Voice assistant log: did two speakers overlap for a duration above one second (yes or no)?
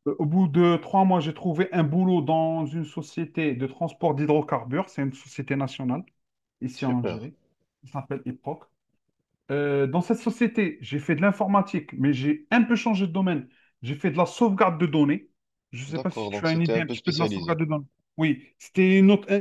yes